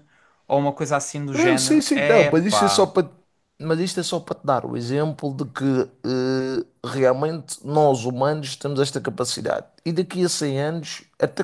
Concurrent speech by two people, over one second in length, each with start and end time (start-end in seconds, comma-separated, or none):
1.3-2.9